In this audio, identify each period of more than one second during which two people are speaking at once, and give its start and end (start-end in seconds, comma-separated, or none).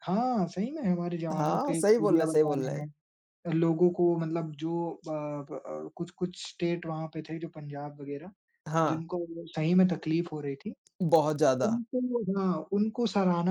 1.3-2.9